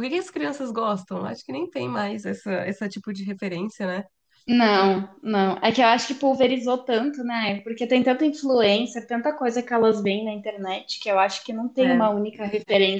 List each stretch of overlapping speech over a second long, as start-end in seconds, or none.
none